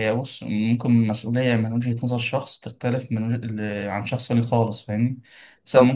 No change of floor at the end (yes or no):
yes